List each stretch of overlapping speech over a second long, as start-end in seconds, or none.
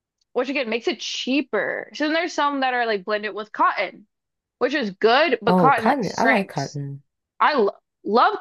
5.5-6.8